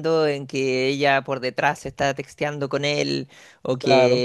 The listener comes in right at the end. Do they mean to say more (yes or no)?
no